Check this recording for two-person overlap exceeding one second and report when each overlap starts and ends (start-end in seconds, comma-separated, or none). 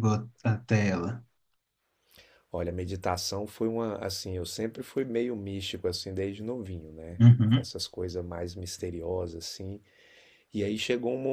none